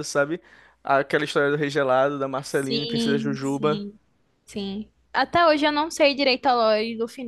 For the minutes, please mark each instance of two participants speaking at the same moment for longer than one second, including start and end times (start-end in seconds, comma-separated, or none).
2.4-3.9